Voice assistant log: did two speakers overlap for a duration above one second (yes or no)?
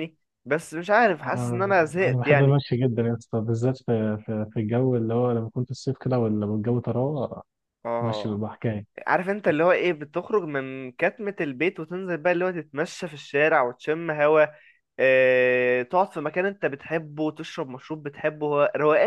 yes